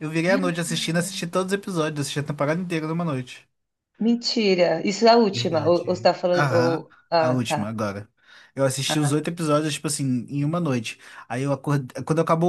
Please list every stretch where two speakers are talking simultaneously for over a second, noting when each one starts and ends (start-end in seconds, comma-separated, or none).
5.3-7.8